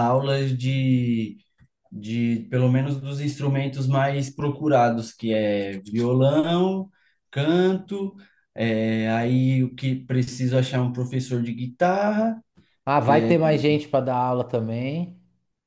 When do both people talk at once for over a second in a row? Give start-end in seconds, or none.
none